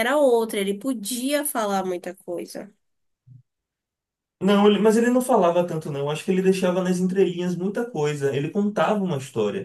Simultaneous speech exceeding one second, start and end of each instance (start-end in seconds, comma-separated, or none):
none